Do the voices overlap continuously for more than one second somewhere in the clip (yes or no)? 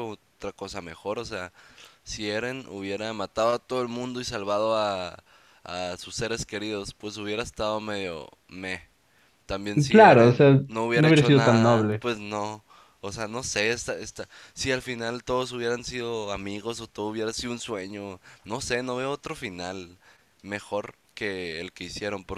yes